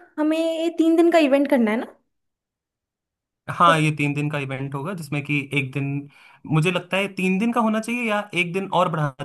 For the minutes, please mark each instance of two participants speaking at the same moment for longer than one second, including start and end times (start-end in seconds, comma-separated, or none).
none